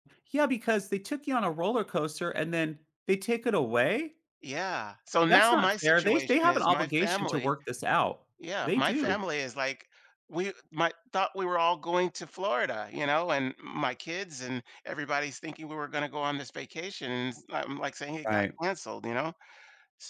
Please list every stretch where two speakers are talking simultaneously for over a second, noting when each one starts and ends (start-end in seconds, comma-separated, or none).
5.3-7.6